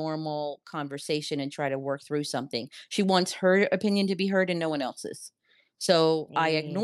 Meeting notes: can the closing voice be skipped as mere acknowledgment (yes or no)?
yes